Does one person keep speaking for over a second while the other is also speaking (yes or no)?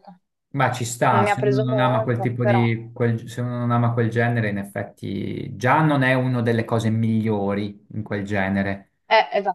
yes